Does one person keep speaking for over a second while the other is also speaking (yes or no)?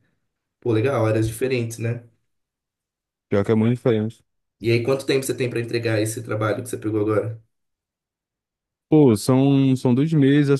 no